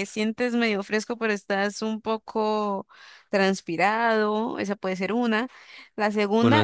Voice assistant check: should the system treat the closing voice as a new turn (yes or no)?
no